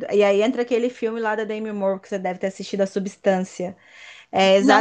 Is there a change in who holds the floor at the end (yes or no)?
no